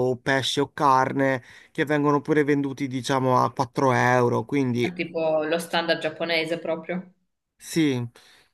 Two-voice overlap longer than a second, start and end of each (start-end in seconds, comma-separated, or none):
none